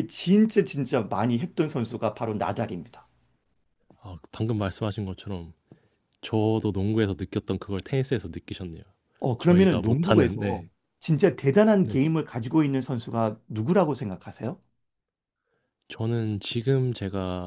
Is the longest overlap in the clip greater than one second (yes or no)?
yes